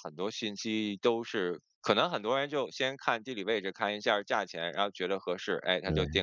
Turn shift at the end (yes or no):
no